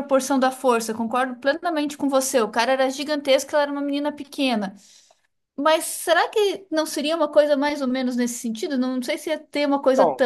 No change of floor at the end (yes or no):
no